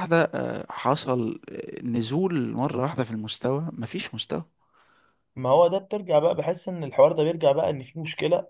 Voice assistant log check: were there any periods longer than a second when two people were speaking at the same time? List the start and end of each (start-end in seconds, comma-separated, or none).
none